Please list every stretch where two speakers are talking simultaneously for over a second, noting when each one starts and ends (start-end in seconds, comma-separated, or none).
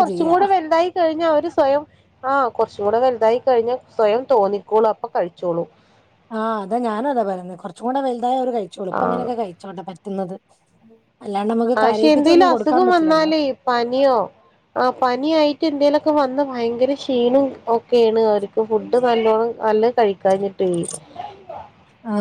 11.8-13.3